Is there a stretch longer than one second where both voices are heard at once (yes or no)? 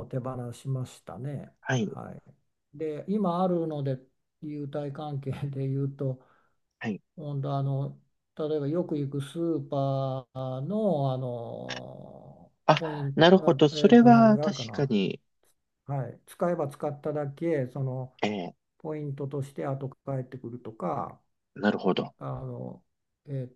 yes